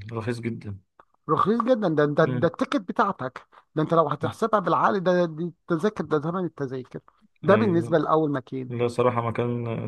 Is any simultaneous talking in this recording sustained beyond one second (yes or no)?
no